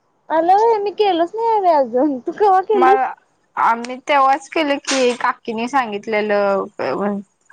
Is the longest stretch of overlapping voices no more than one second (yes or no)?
yes